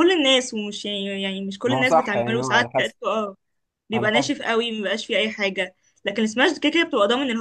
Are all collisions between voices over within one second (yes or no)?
no